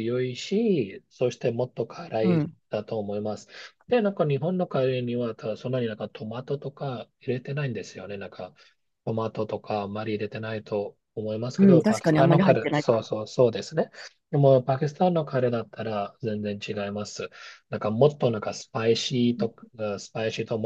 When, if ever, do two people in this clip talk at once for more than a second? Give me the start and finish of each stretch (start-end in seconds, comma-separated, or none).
11.6-12.8